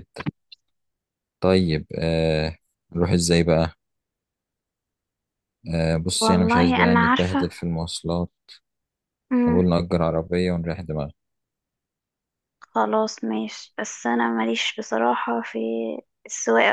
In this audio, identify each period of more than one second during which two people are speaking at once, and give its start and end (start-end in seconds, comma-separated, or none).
6.2-7.5